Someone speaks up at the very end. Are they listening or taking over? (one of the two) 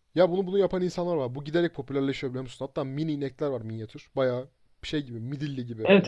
taking over